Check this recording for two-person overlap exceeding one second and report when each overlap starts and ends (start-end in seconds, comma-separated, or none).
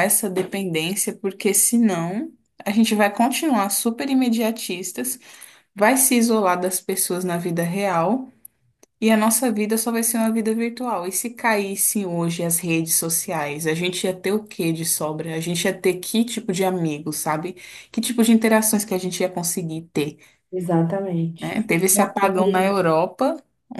21.4-22.8